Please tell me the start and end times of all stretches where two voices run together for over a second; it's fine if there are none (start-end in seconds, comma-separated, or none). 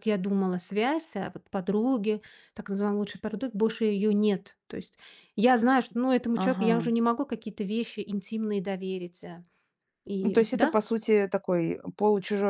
none